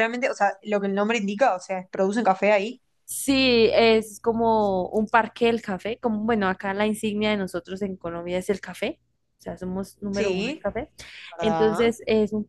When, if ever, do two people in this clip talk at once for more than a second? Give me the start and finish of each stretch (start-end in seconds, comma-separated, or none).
none